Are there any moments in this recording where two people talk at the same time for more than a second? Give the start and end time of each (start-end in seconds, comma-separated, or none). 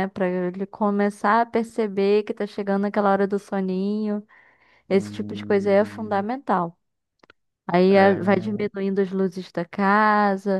4.9-6.2